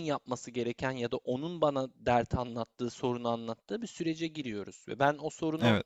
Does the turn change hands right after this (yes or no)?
no